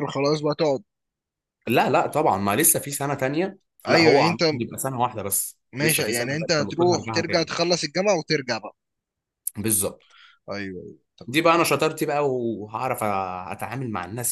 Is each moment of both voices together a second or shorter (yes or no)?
no